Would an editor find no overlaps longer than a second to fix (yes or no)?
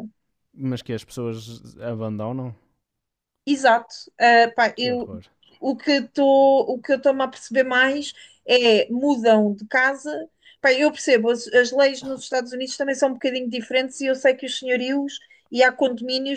yes